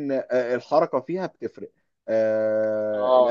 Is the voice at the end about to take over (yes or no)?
no